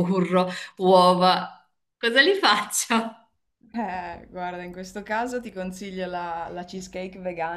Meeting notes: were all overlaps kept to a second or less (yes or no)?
yes